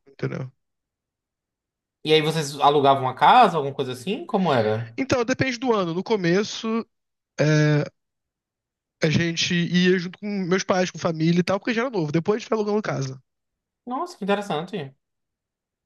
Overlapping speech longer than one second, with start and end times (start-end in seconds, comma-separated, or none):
none